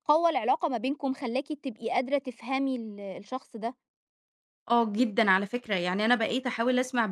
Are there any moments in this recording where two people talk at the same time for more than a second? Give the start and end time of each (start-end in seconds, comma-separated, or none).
none